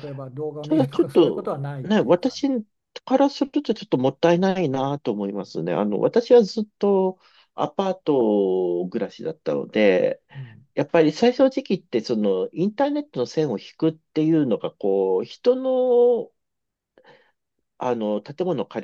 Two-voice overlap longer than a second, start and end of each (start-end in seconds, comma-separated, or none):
0.6-2.4